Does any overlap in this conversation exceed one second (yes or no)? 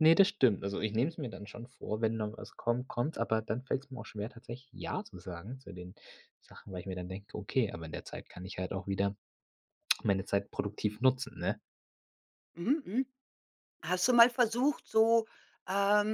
no